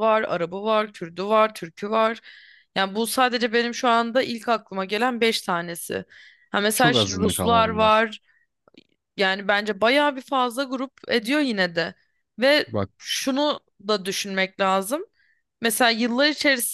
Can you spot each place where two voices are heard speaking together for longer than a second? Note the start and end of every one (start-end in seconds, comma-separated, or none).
6.7-8.0